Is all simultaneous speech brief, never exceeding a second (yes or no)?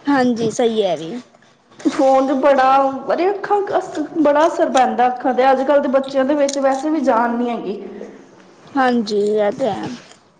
yes